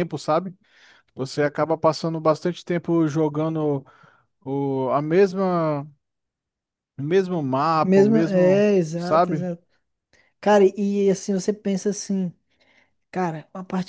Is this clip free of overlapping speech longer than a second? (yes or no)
no